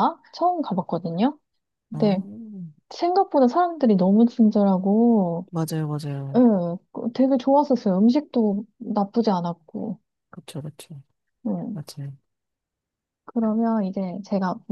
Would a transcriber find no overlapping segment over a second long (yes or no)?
yes